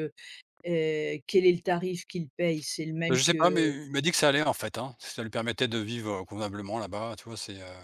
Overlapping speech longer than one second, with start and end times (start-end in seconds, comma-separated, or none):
none